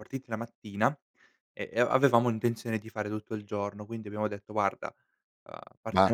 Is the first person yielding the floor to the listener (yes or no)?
yes